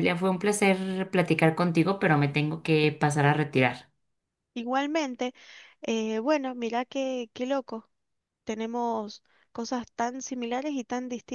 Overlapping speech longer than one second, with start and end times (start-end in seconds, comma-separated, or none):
none